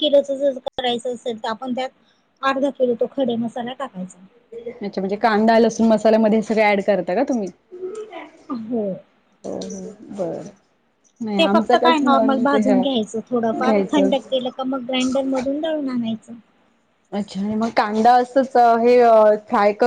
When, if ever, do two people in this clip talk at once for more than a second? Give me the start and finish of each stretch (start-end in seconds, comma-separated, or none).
none